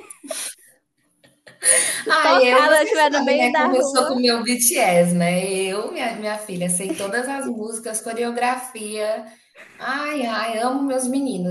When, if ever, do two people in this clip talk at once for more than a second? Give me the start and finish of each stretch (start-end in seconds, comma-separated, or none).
2.2-4.2